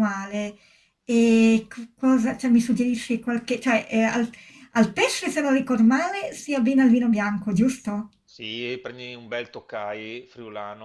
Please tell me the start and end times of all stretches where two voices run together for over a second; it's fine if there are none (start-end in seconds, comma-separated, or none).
none